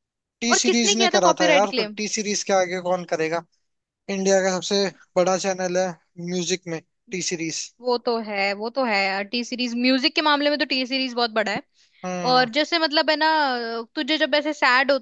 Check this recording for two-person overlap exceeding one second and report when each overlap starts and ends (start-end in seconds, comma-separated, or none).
0.5-2.0